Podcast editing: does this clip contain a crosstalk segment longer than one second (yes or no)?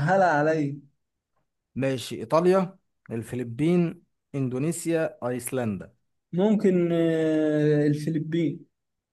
no